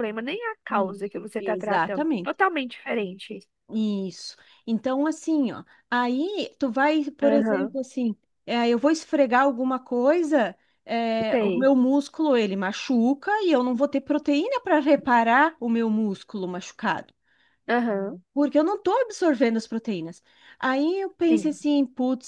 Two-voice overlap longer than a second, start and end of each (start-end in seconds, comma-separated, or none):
0.7-2.4